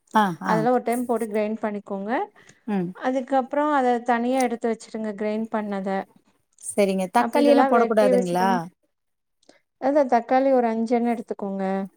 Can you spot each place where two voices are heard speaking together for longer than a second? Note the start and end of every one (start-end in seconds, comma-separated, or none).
7.2-8.5